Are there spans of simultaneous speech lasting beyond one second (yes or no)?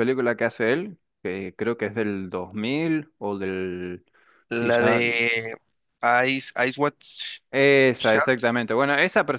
no